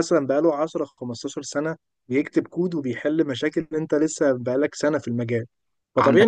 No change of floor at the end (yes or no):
yes